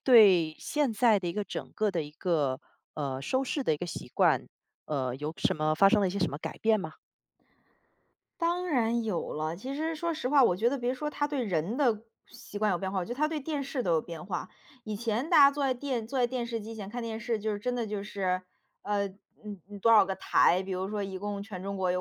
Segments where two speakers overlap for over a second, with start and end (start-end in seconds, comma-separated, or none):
none